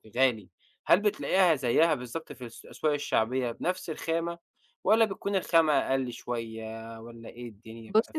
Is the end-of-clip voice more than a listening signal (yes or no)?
yes